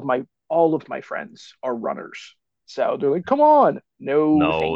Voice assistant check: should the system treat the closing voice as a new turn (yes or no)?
yes